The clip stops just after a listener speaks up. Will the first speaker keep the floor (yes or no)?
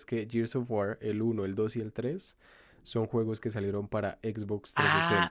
no